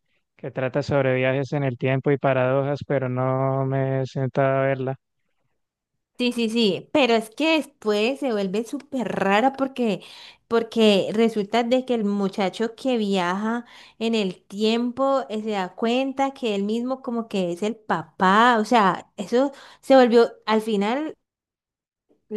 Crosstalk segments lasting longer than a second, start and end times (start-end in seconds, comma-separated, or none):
none